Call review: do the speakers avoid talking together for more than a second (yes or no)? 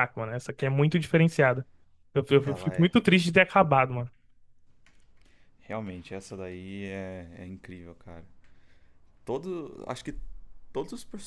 yes